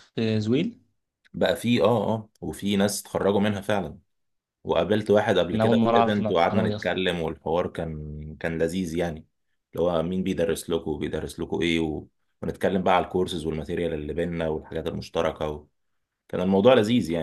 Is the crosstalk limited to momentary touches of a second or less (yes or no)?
no